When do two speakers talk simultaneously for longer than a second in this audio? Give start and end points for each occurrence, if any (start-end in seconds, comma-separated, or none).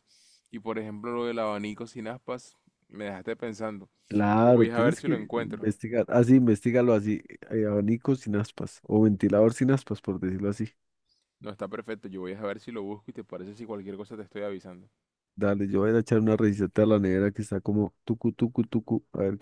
4.4-5.7